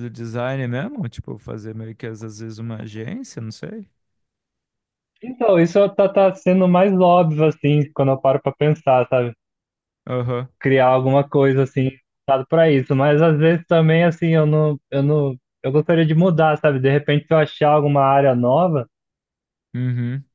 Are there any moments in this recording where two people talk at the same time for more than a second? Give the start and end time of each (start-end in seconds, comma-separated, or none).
none